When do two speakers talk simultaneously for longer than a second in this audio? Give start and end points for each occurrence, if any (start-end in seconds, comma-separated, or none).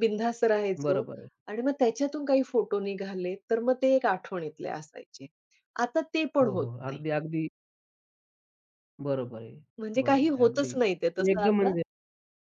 9.8-11.7